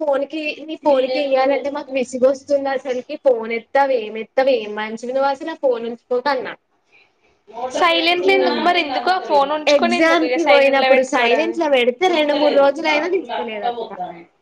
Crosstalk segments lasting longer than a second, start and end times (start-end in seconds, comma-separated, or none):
9.8-11.6